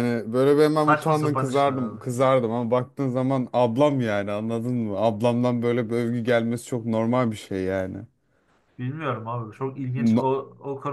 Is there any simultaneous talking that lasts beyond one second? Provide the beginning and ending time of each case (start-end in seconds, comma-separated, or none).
0.7-2.0